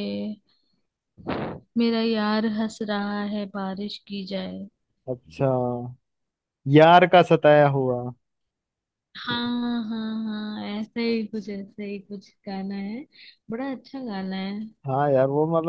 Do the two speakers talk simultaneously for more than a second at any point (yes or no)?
no